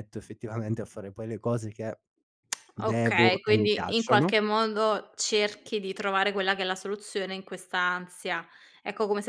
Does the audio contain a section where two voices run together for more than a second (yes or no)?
yes